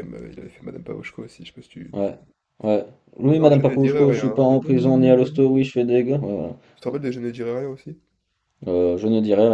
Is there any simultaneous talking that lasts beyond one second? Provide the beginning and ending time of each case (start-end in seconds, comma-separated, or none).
3.3-5.4